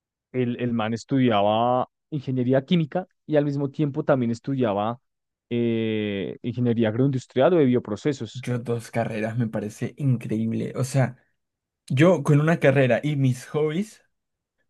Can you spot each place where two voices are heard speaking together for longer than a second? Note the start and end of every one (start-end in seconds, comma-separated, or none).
none